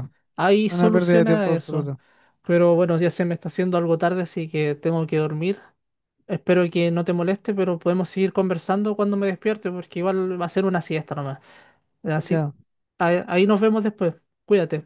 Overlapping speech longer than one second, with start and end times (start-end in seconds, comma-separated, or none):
0.7-1.9